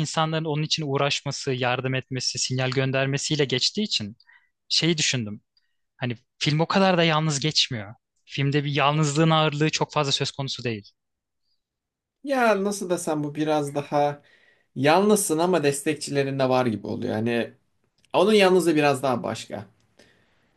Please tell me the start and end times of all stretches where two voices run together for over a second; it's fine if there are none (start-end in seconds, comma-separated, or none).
none